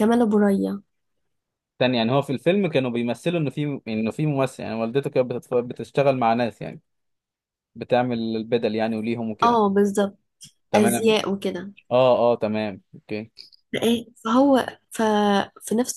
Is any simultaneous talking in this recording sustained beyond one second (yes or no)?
no